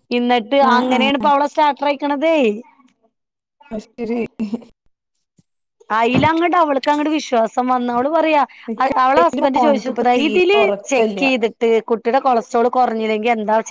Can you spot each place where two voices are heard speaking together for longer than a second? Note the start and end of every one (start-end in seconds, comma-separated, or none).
8.8-11.2